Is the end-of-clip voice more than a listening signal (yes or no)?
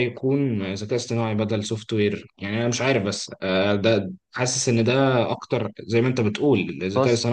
no